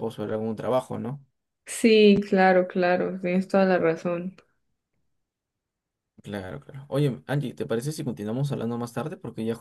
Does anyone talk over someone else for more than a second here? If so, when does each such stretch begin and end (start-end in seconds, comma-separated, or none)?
none